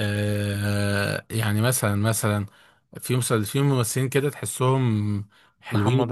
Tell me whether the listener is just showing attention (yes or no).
yes